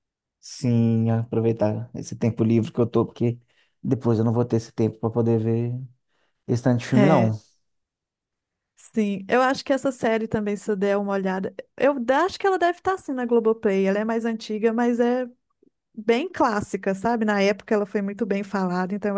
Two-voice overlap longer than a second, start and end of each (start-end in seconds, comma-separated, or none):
none